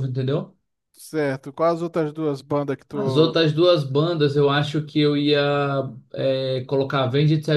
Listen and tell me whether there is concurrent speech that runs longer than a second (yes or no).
no